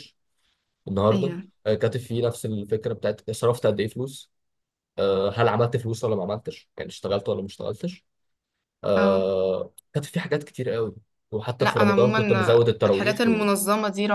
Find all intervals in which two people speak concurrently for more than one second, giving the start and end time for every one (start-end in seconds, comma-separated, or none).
11.6-13.2